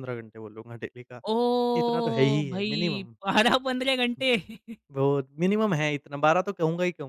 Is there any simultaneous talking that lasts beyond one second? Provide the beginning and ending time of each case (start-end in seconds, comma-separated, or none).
1.8-3.1